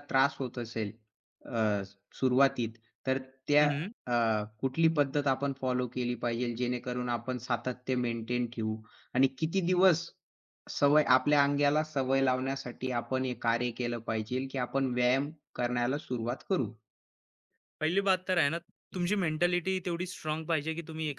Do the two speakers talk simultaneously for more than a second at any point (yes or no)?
no